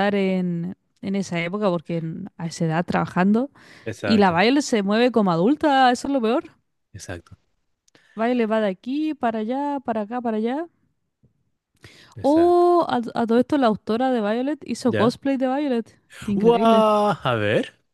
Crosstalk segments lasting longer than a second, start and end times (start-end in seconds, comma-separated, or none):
none